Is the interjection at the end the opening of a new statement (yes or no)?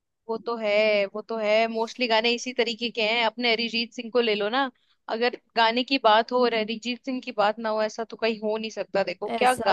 yes